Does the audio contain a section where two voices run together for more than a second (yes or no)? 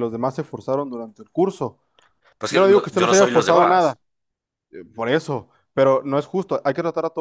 yes